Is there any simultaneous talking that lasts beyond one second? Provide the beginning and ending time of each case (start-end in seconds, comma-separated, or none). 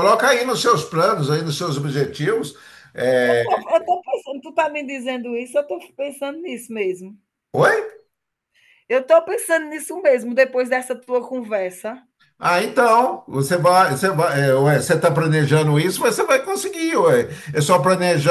none